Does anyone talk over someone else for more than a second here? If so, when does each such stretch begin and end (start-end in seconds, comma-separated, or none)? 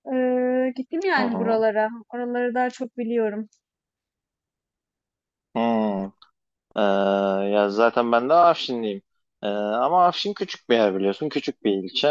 none